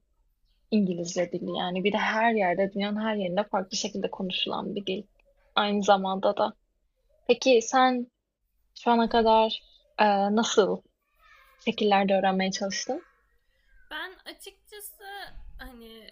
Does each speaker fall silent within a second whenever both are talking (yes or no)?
yes